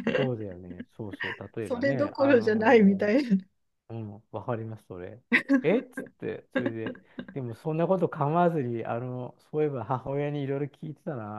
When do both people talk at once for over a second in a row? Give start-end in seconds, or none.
1.6-3.1